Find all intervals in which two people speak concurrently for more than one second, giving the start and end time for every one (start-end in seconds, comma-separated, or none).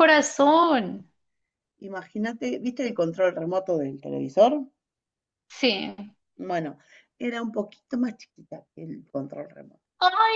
none